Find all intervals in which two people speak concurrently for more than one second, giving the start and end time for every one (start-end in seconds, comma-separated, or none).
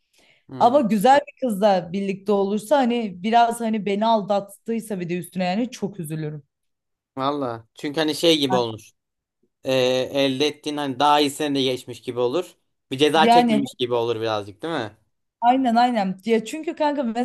none